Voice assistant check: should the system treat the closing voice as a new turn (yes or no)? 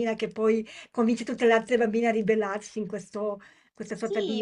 yes